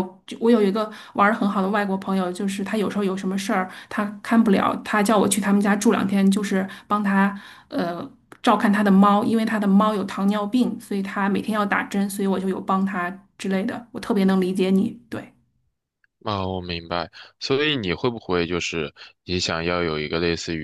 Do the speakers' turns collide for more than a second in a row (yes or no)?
no